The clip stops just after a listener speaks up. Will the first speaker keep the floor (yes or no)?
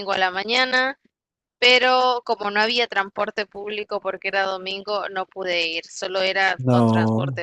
yes